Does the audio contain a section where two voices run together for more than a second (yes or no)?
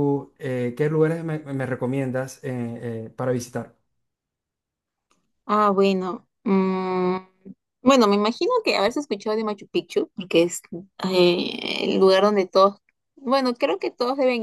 no